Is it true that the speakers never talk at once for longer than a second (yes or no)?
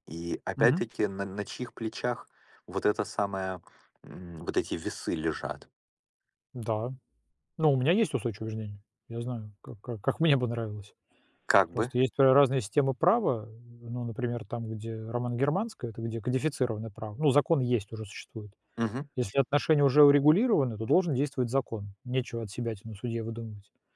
yes